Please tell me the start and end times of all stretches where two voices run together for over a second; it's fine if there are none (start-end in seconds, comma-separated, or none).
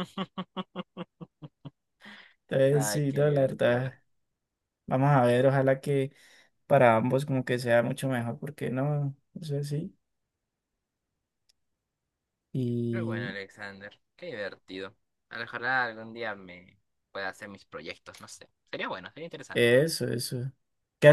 2.7-3.9